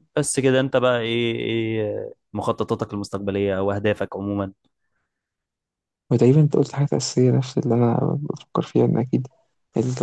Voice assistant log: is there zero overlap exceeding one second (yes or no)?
yes